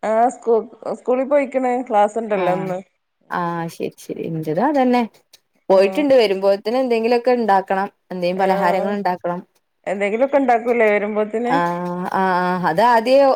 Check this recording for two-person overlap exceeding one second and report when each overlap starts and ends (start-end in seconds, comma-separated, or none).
none